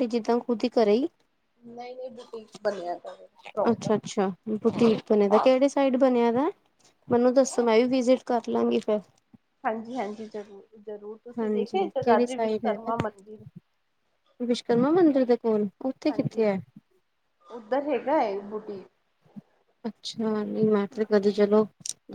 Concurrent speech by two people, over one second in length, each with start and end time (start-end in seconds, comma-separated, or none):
11.4-12.9